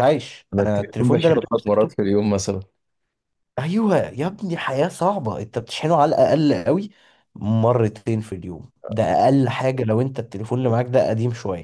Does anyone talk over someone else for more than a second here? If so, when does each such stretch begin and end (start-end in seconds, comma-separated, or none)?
0.5-2.0